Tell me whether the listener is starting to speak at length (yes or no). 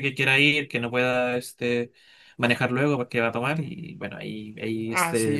yes